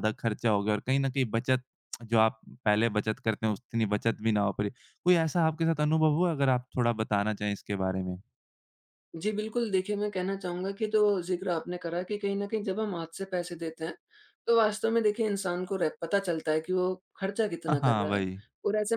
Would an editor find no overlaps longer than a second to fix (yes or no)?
yes